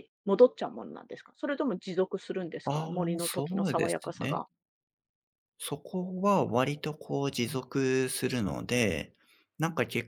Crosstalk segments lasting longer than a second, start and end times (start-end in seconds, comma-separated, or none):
2.6-4.4